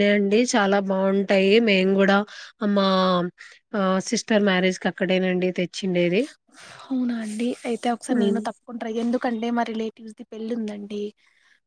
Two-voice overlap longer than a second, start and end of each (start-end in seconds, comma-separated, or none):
none